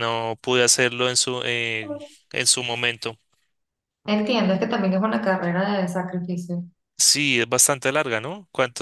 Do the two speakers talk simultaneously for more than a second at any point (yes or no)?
no